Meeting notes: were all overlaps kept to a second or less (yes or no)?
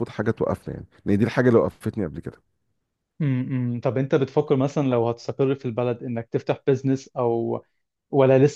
yes